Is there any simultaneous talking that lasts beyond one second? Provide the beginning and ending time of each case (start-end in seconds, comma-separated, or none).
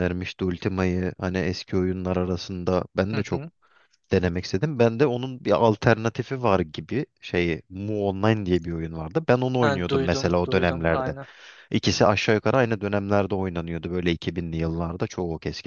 9.6-11.1